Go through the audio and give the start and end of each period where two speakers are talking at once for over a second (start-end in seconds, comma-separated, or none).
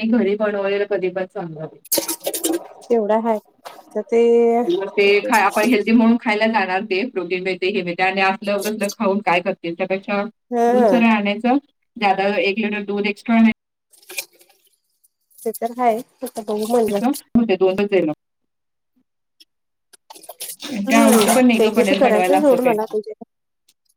20.9-22.7